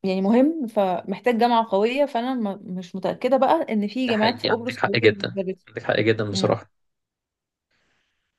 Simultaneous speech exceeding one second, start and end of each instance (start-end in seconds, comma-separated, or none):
4.1-5.7